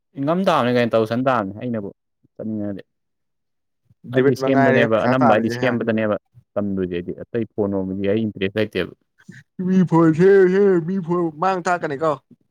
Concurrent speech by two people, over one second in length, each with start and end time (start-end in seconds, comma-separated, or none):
4.2-5.8